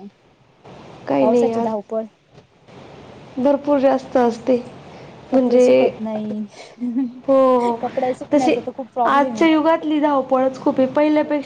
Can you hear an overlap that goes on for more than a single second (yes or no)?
no